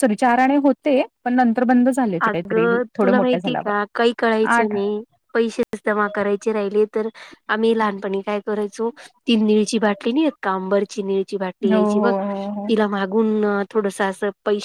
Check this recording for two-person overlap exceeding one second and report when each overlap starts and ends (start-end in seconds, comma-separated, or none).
2.3-3.7